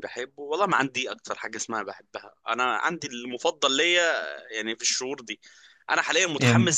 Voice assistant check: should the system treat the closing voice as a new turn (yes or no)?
no